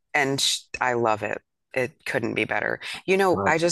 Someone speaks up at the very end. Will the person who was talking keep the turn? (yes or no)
yes